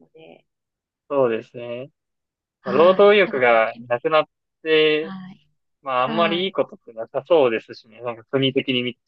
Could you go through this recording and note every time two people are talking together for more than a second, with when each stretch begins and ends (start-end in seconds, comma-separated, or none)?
2.6-4.1